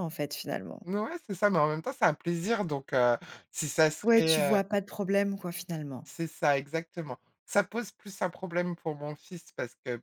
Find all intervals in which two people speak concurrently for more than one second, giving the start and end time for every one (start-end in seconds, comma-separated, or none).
none